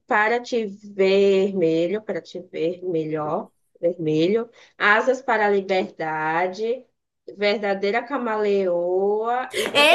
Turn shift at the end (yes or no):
yes